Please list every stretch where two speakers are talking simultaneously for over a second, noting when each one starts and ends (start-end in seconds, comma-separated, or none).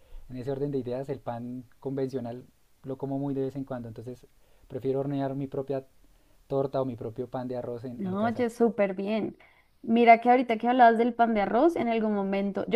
none